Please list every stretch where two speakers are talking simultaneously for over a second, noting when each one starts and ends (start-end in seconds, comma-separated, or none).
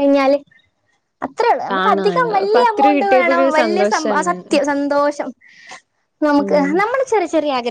1.7-4.3